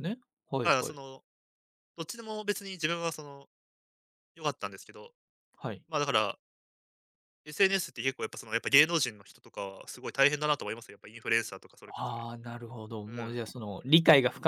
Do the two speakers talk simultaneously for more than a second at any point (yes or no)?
no